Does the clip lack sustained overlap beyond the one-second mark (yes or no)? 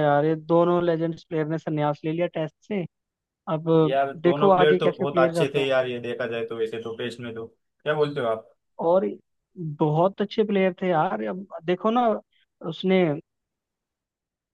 no